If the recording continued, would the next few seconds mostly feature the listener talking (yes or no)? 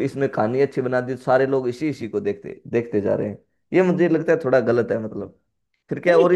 yes